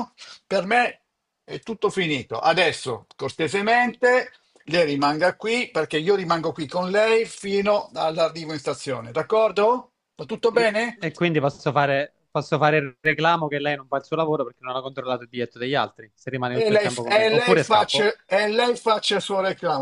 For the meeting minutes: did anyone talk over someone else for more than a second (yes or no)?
yes